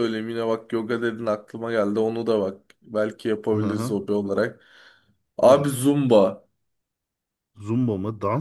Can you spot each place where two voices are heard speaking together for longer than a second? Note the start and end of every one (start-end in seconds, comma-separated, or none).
none